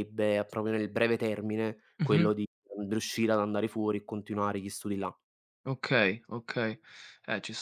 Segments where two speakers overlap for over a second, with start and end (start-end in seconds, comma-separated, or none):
none